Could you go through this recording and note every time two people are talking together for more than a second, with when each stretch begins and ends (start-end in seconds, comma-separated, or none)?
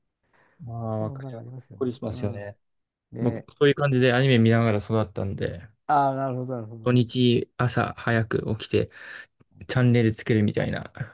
1.0-2.5